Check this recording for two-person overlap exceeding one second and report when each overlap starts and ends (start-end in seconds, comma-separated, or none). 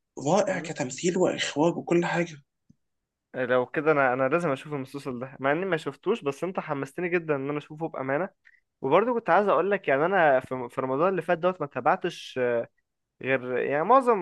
none